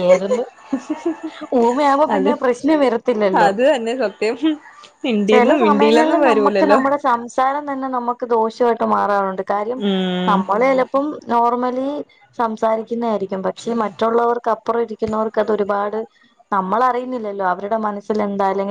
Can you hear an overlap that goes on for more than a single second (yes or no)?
yes